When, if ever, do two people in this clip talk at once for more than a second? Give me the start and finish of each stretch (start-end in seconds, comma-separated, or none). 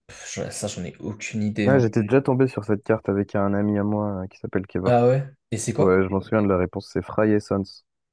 none